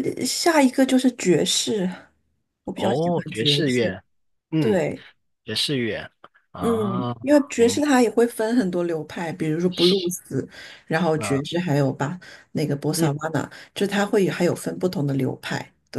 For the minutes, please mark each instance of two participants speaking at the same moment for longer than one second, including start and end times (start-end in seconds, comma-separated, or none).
2.7-4.0